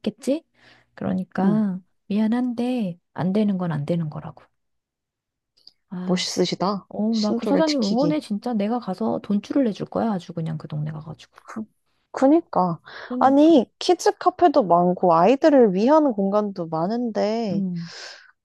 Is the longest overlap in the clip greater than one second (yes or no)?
yes